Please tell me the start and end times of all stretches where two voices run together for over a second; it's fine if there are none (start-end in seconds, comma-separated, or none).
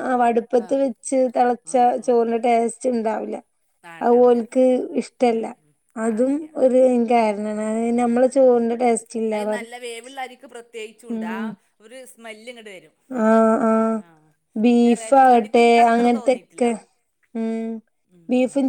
15.0-16.7